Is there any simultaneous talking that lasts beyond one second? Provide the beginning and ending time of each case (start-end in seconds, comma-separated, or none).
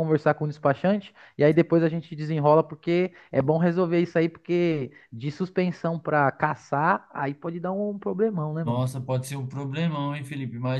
none